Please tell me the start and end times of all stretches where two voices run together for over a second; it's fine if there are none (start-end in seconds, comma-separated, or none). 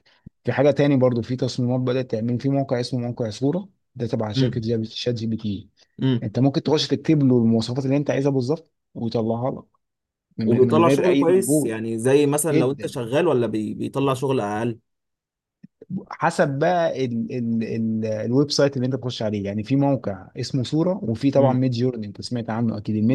10.4-11.7